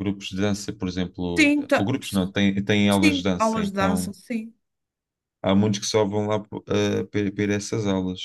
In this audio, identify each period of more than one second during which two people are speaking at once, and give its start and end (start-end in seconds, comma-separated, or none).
2.9-4.1